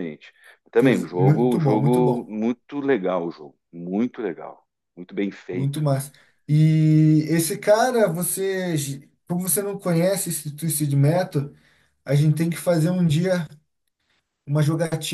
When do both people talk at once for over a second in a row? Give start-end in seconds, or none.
0.8-2.3